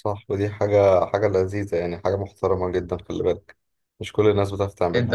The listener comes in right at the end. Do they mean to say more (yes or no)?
yes